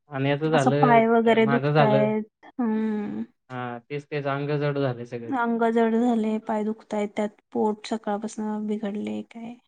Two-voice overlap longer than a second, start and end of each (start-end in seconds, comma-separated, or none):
0.6-2.1